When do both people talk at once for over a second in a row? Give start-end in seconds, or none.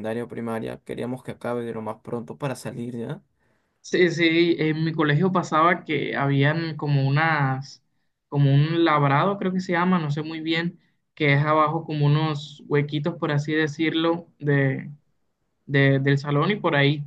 none